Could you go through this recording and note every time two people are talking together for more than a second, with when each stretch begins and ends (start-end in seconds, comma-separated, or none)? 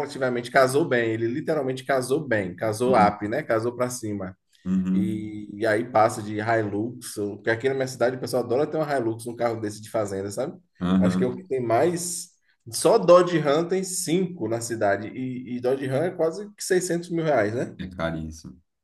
none